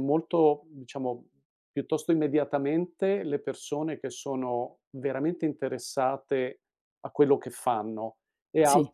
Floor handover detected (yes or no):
no